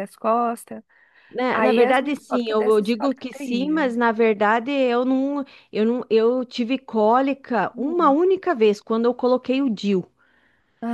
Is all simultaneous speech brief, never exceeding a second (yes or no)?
no